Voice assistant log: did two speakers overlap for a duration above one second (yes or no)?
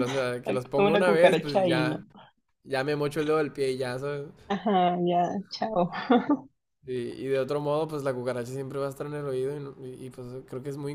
yes